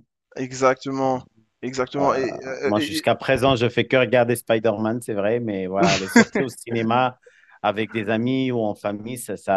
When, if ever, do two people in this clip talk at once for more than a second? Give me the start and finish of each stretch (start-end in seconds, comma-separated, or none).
none